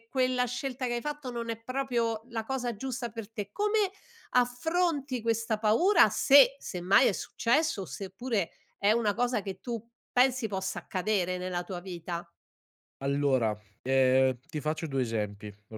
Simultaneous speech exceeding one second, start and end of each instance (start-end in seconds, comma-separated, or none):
none